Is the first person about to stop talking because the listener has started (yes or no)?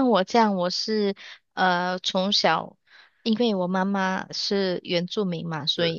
no